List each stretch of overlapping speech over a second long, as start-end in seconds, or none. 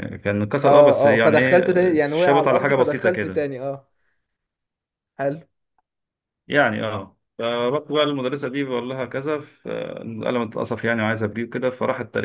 0.6-3.4